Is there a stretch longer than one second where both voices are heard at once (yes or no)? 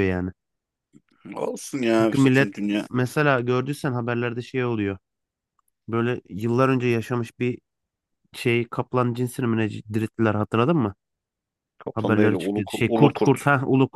yes